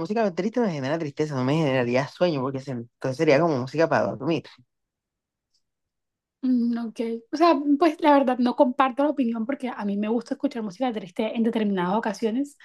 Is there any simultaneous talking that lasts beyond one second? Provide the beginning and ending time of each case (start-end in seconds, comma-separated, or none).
none